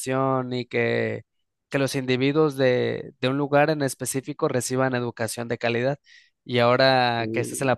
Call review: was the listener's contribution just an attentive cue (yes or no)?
yes